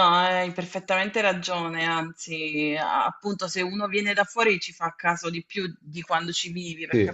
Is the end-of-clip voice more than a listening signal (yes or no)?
no